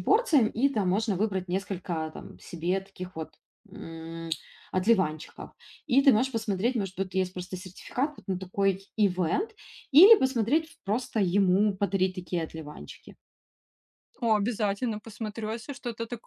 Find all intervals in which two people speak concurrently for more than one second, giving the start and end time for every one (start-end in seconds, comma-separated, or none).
none